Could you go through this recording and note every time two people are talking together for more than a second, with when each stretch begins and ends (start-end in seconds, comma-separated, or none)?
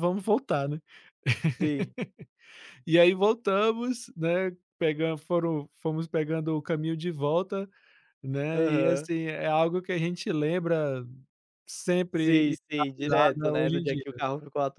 12.1-14.0